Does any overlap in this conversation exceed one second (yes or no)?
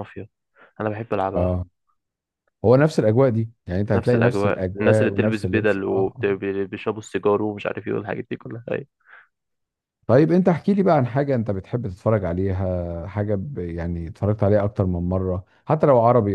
yes